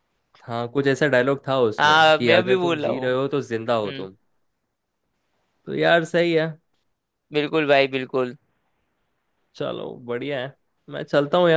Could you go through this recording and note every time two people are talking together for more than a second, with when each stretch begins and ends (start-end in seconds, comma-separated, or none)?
1.8-3.1